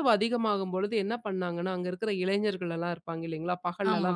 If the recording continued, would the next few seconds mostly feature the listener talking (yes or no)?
no